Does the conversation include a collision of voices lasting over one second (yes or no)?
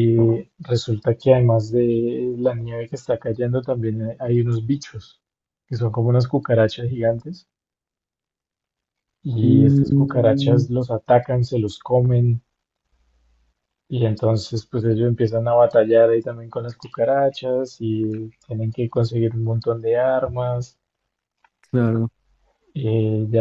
yes